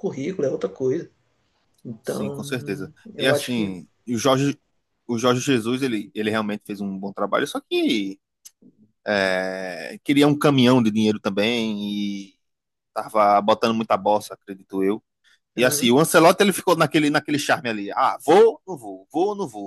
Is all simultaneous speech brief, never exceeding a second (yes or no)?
no